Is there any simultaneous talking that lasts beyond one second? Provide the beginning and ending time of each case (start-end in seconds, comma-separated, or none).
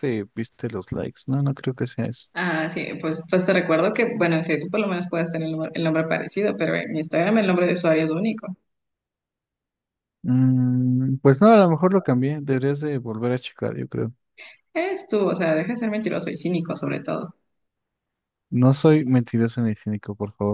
none